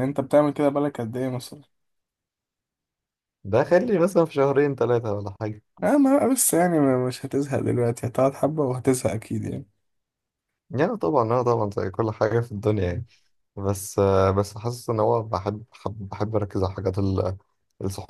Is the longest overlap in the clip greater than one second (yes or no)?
no